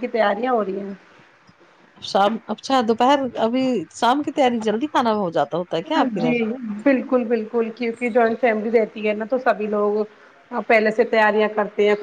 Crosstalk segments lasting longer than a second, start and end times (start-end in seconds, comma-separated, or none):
none